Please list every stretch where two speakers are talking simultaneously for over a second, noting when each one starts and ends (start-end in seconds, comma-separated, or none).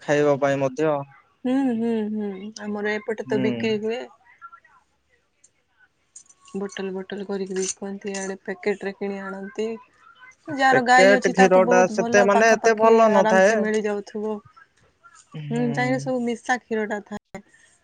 10.7-13.5